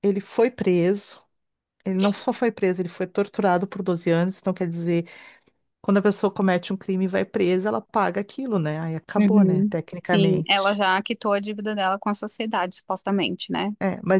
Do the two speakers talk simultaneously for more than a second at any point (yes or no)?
yes